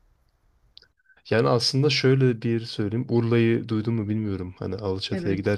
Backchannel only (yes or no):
yes